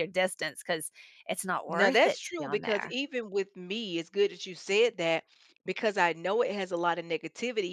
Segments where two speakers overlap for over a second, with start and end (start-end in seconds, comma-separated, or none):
1.7-3.0